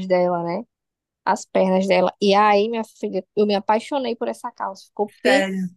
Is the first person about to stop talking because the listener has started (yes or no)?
no